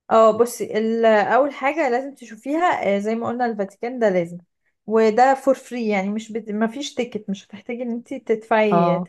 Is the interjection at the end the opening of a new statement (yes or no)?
no